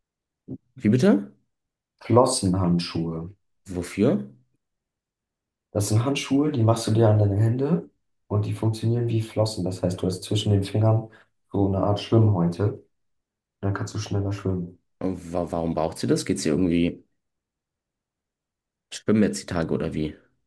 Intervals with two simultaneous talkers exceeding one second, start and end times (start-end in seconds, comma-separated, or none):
none